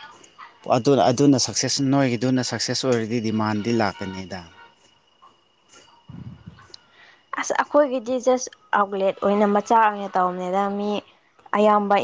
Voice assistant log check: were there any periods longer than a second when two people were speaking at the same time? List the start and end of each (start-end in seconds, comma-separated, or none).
none